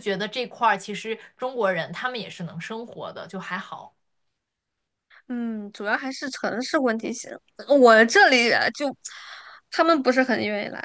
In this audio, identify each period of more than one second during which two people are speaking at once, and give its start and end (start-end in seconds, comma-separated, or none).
none